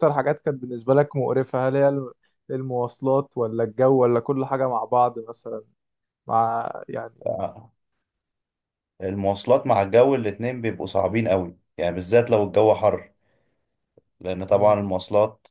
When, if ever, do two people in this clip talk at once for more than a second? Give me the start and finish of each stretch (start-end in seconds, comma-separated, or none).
none